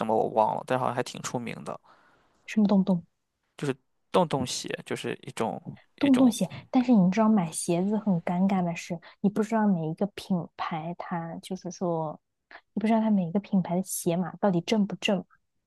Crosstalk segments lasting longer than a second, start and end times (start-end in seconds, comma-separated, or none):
none